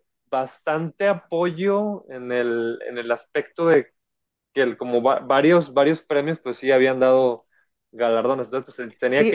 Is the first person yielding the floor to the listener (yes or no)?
yes